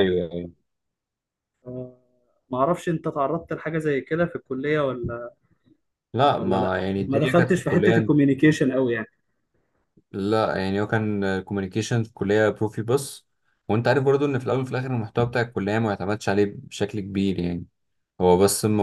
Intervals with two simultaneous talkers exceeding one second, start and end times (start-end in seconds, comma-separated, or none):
6.3-8.0